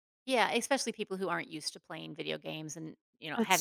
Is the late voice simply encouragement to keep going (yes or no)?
no